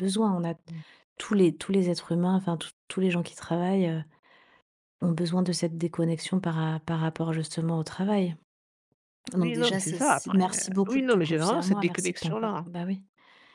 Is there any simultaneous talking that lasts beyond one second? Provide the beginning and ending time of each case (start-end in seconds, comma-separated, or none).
9.3-12.7